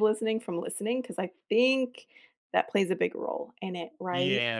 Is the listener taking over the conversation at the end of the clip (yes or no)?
yes